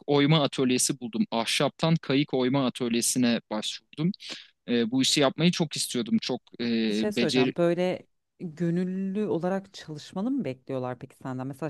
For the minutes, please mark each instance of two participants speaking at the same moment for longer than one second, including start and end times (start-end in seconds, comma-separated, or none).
none